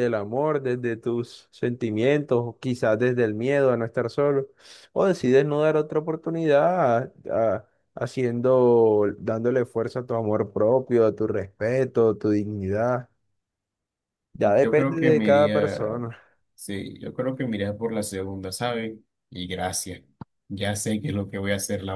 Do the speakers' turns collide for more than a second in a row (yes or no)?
yes